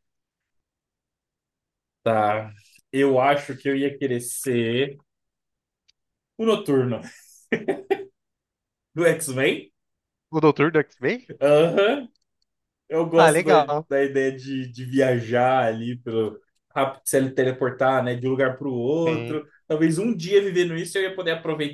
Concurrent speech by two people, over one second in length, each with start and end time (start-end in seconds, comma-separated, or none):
none